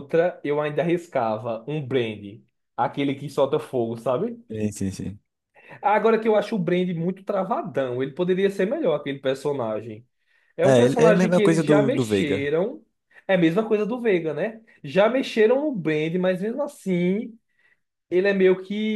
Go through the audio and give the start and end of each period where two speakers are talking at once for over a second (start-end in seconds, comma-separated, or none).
10.6-12.5